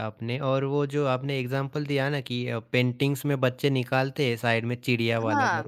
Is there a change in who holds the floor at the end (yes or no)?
no